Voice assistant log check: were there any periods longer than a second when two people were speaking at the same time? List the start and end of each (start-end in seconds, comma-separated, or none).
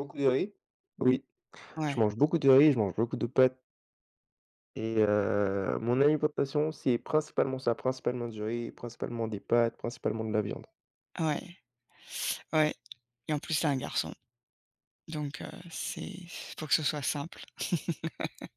none